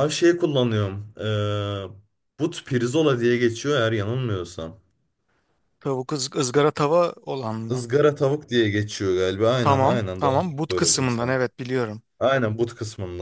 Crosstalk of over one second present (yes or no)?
yes